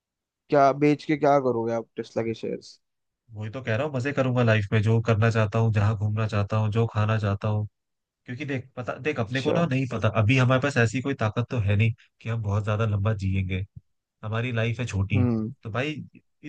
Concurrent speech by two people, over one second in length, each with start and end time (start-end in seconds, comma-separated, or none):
none